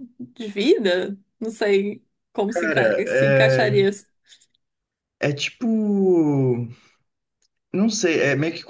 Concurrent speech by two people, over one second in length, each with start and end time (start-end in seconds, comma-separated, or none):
2.5-3.9